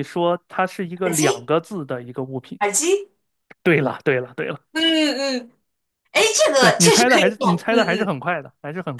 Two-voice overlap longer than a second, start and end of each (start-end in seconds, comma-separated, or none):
6.6-8.1